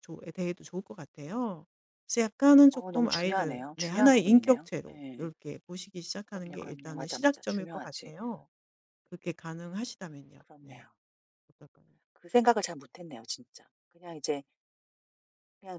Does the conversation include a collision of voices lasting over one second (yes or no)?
yes